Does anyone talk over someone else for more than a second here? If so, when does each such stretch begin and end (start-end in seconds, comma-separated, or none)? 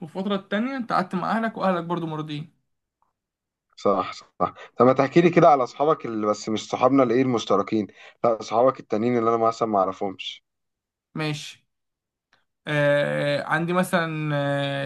none